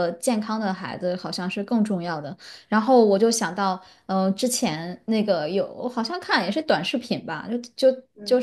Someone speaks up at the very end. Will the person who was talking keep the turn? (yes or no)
yes